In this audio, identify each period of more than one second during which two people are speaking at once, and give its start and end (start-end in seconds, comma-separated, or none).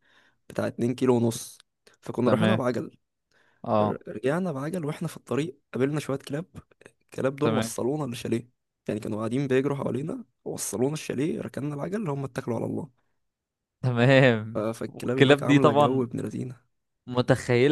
14.5-16.0